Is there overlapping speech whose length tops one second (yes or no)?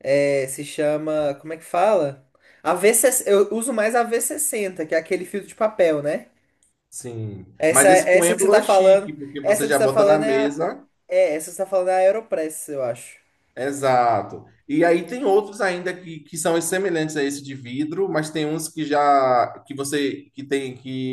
yes